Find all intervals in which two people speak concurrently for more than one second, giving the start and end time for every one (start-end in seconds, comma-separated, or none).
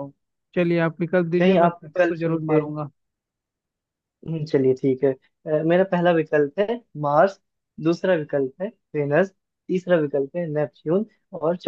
1.4-2.6